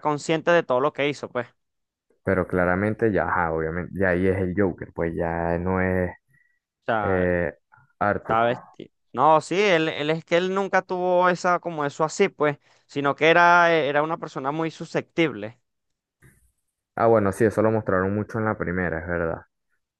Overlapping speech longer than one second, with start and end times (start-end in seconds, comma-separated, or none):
none